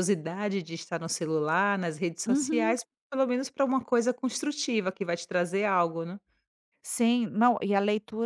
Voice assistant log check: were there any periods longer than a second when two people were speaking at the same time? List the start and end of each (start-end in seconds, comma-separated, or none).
none